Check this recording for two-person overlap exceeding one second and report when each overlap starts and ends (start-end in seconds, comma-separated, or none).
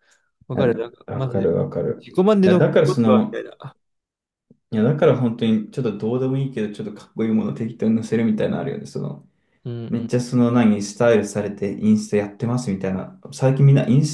0.5-3.4